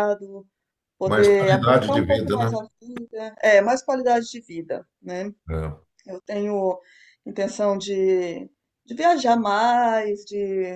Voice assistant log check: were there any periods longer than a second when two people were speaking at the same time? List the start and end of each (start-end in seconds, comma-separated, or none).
1.1-2.6